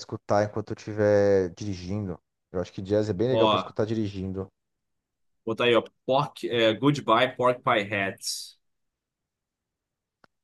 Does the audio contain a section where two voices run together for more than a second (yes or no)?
no